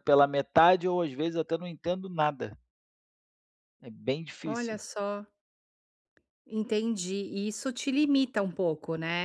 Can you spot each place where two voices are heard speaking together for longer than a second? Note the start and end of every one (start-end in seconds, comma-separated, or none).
none